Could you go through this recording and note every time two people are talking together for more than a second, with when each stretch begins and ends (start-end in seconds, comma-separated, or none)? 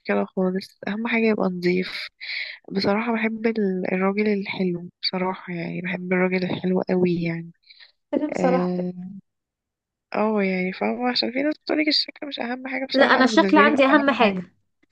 12.9-14.4